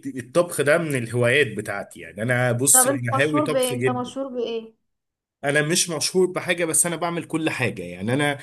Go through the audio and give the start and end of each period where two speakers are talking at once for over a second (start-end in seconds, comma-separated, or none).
2.7-4.1